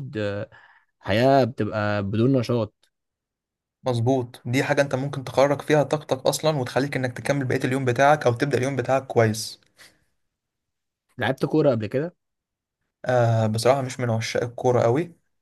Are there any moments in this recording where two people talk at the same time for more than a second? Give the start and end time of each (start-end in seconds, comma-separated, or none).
none